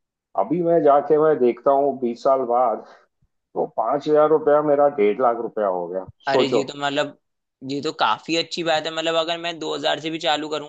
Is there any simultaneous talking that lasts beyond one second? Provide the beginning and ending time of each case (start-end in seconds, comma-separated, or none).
none